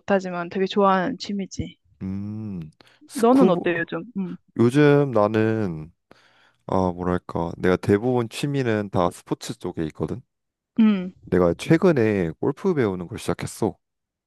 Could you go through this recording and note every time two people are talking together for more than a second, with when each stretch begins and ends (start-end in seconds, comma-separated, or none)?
none